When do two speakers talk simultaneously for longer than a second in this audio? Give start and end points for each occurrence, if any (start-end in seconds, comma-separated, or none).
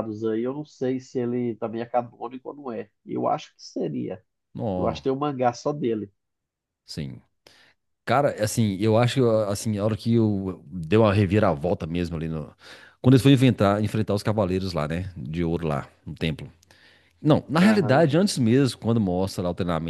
none